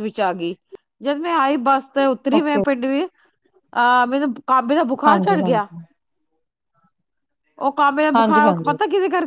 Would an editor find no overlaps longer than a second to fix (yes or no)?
yes